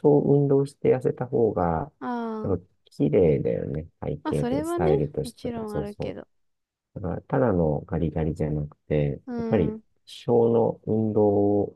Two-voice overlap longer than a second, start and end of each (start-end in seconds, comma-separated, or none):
4.2-6.2